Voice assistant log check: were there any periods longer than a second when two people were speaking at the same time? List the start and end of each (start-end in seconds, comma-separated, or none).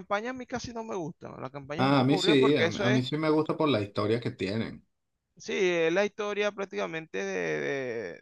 1.8-3.0